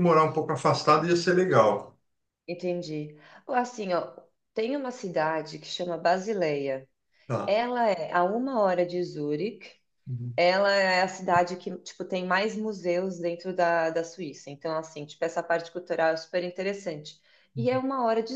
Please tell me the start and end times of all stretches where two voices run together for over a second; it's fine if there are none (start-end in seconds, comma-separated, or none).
none